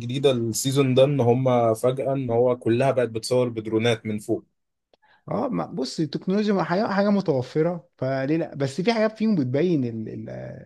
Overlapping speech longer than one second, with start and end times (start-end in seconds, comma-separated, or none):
none